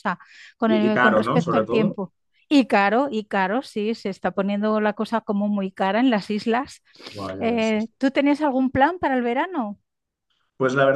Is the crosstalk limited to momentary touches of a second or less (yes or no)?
no